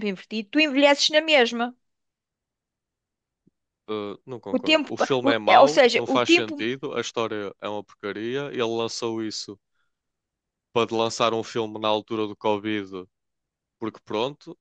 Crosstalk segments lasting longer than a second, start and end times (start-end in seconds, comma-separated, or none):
4.5-6.7